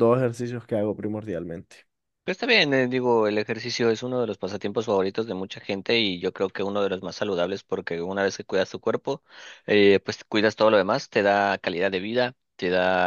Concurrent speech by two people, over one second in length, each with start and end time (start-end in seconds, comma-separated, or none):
none